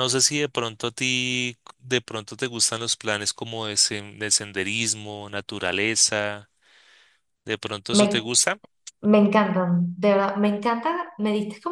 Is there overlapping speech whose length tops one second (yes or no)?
no